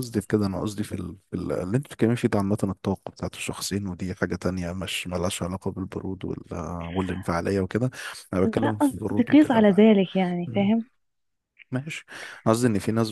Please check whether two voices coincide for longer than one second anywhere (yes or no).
yes